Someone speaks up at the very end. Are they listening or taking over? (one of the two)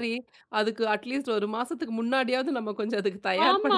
taking over